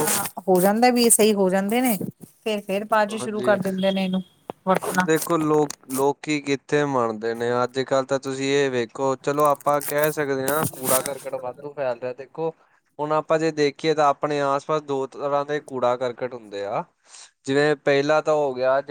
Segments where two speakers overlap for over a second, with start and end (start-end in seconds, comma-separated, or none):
none